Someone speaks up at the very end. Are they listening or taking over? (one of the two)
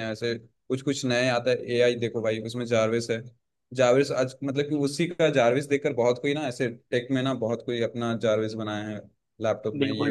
taking over